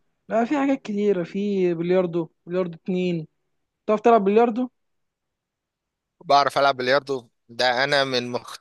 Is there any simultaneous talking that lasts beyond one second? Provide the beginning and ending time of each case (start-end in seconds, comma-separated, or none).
none